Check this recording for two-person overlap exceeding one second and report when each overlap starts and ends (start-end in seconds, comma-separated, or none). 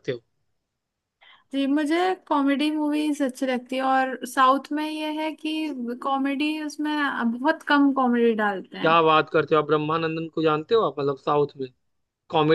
none